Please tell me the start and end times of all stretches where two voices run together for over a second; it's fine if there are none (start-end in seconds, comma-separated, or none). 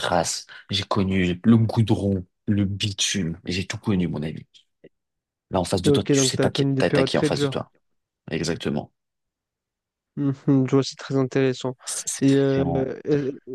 5.8-7.6